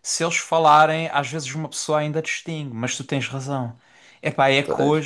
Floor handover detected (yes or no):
no